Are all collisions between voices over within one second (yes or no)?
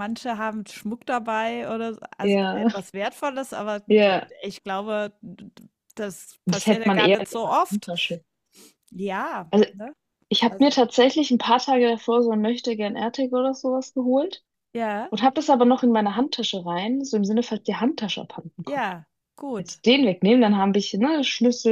no